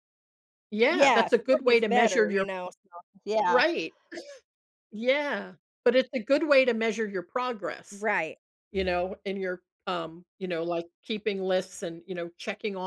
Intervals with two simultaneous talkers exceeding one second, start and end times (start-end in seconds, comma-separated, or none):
0.9-2.5